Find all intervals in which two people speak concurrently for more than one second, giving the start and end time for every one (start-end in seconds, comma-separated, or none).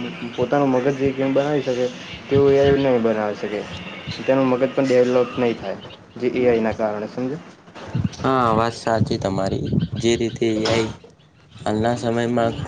none